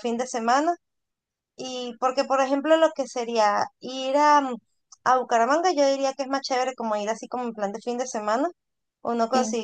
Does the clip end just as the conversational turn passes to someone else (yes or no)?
no